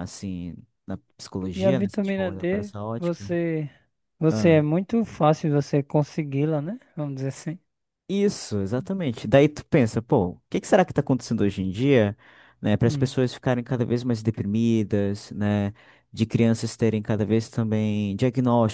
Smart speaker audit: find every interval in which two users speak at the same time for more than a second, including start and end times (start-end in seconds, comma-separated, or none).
1.5-3.3